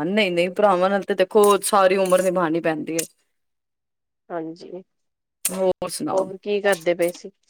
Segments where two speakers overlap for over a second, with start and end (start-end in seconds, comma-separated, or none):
none